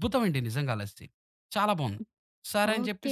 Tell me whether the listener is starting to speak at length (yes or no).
yes